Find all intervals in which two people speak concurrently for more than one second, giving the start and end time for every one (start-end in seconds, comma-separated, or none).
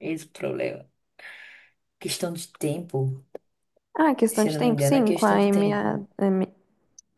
4.3-5.9